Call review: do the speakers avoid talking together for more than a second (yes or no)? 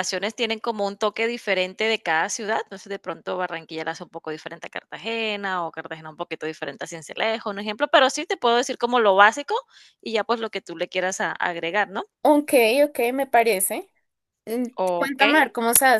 yes